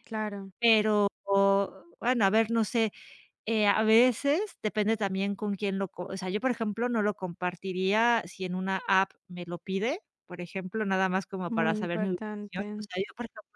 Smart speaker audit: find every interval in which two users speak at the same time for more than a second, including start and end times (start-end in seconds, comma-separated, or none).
11.5-12.8